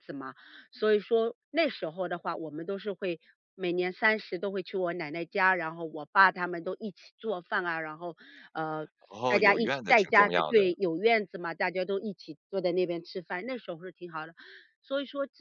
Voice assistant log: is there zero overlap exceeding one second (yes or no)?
no